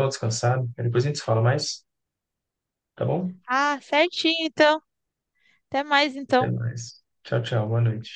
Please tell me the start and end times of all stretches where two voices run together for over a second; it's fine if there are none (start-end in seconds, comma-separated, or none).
none